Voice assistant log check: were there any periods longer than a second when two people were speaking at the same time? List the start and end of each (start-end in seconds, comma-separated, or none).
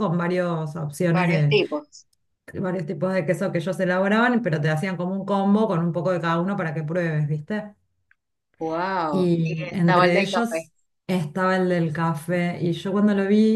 9.1-10.7